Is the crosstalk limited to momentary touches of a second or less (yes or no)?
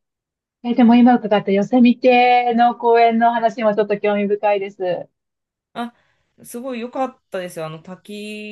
yes